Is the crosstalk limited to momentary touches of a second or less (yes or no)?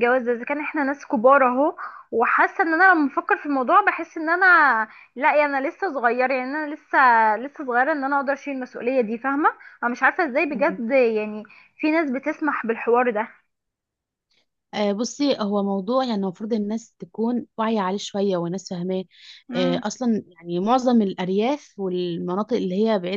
yes